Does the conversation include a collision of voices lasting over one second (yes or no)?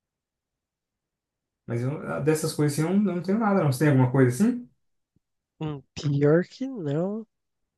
no